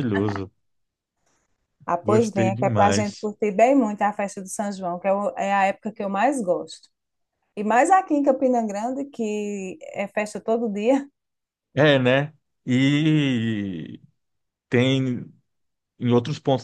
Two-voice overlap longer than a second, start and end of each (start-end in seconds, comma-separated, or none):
2.0-3.3